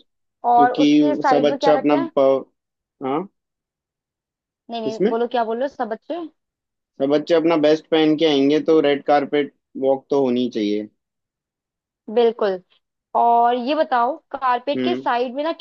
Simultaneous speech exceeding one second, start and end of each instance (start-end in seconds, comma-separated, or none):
0.5-2.0